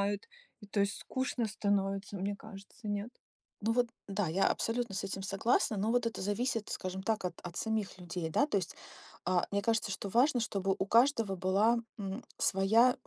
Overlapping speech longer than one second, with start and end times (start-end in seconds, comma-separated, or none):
none